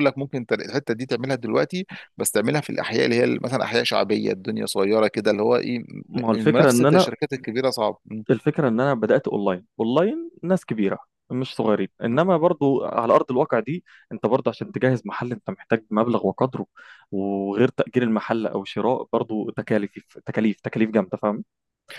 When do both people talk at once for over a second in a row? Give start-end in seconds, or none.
none